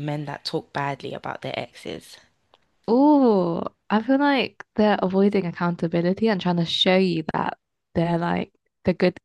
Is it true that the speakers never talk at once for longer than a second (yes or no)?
yes